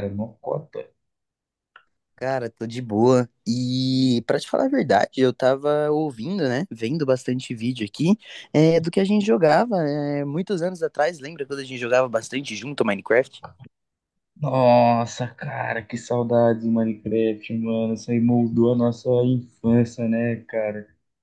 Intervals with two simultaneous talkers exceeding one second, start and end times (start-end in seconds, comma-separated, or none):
none